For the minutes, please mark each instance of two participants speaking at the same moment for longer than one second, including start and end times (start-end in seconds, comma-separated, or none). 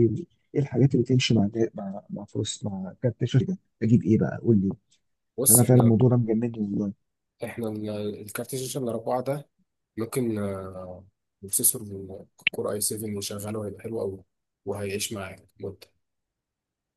none